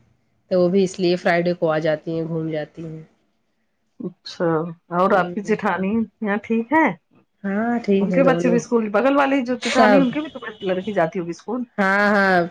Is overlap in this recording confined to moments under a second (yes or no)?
yes